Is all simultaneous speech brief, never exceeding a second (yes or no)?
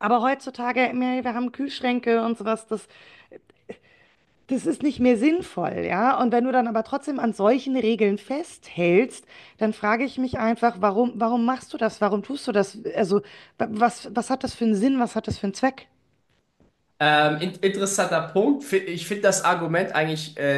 yes